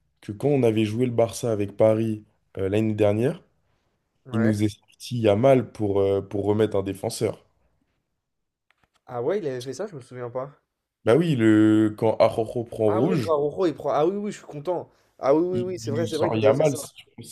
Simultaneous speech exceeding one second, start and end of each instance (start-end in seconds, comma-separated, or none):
15.5-16.8